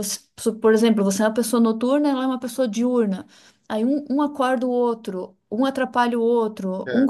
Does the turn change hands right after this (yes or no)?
no